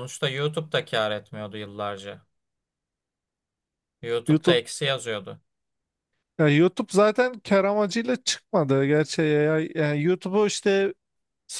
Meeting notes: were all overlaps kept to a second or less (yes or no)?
yes